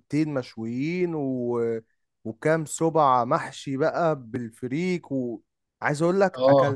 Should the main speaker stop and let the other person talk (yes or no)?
no